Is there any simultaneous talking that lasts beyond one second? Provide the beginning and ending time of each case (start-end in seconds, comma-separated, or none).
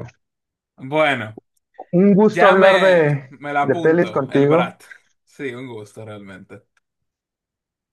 2.2-4.7